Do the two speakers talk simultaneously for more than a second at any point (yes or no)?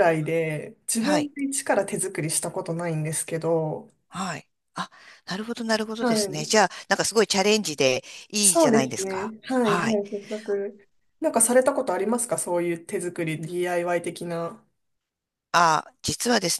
yes